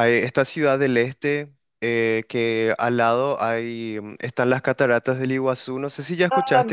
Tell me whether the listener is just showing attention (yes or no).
no